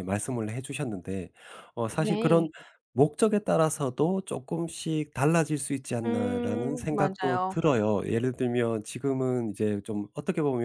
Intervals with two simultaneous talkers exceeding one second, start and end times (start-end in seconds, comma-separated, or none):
6.1-7.5